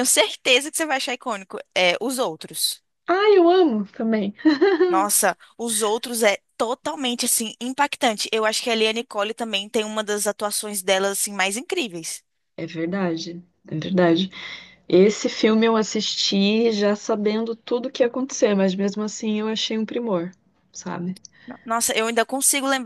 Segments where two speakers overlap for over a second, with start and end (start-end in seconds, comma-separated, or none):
none